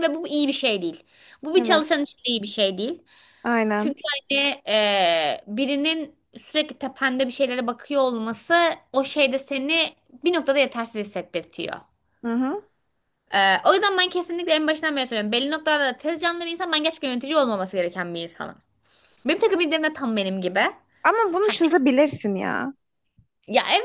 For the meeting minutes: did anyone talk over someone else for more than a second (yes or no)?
no